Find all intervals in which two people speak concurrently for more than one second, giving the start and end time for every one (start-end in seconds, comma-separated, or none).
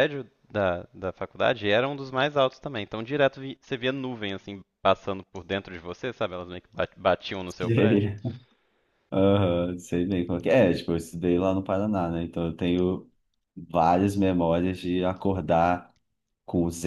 none